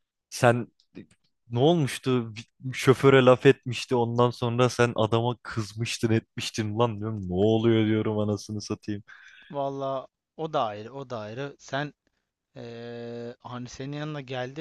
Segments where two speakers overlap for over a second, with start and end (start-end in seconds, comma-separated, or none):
none